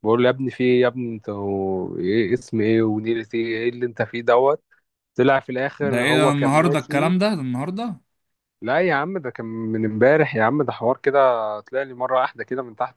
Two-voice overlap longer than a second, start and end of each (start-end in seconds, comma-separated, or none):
5.8-7.1